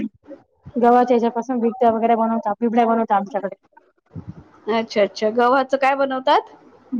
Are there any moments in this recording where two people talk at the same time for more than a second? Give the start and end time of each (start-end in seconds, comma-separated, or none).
none